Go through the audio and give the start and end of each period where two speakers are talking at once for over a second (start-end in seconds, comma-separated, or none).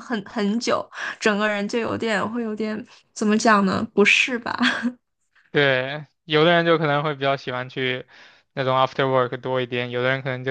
none